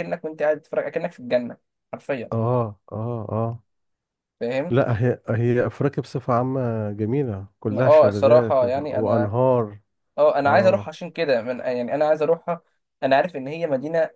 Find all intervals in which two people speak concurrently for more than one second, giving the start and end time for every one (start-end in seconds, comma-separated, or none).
7.7-9.3